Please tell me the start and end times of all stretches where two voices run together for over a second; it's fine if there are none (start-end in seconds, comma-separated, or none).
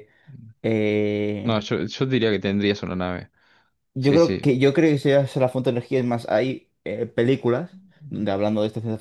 none